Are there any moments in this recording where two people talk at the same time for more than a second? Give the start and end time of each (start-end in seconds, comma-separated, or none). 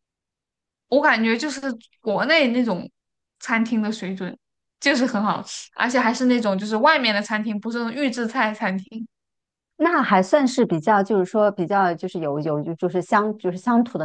none